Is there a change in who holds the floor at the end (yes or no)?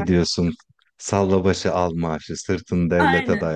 yes